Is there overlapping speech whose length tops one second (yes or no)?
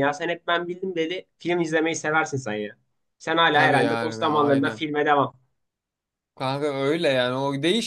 yes